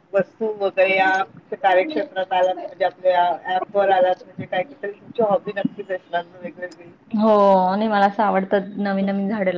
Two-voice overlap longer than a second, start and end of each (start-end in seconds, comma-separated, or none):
none